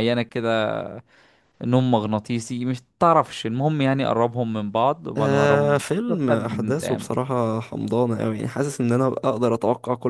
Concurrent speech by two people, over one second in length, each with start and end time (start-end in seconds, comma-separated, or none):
5.2-7.1